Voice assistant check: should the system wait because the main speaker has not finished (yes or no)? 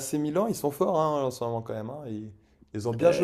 no